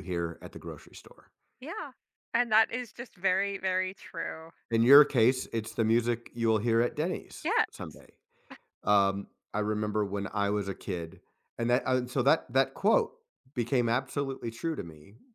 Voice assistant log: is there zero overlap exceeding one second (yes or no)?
yes